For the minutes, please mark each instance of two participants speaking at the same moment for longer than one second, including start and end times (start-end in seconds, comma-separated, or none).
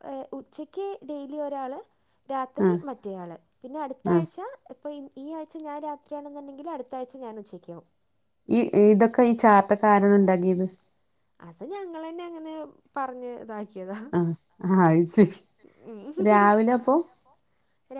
none